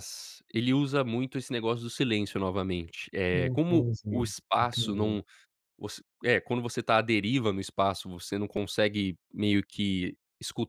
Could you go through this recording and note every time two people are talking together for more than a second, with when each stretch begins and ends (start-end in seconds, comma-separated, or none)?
3.3-5.2